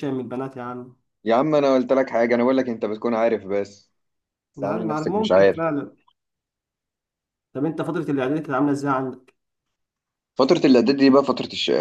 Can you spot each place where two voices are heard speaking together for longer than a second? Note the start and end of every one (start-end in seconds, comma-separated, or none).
4.6-5.8